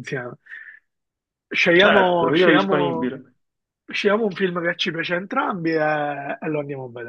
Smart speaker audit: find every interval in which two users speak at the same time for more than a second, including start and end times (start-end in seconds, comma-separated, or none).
1.7-3.1